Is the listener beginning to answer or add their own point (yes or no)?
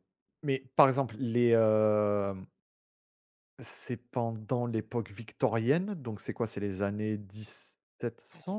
no